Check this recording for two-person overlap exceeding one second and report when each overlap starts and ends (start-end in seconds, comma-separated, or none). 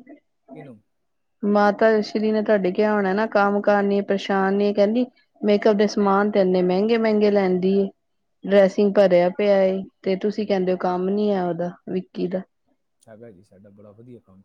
none